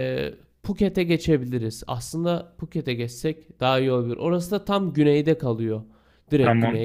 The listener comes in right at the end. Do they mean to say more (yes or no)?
yes